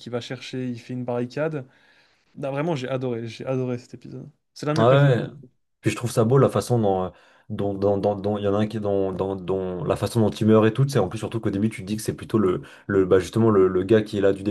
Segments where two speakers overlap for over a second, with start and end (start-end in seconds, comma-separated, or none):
none